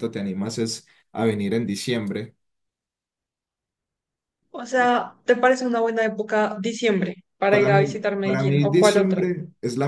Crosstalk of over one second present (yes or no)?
yes